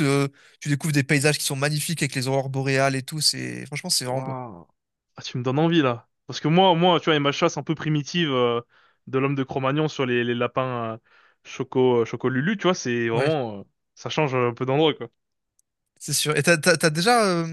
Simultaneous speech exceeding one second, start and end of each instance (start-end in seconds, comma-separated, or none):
none